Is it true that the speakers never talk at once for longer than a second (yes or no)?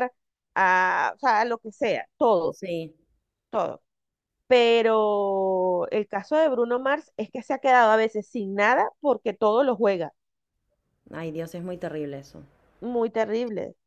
yes